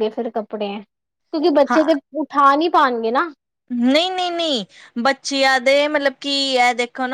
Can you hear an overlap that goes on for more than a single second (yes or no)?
no